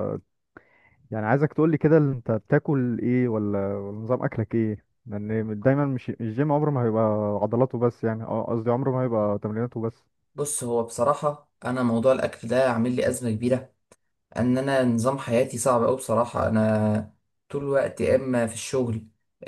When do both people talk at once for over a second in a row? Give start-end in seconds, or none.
none